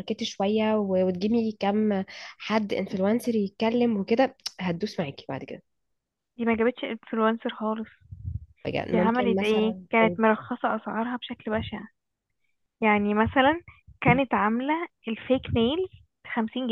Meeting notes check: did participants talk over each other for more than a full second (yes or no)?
yes